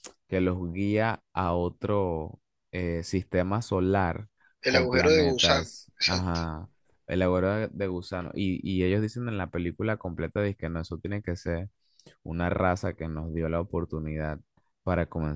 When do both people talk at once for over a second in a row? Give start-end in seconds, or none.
4.7-6.4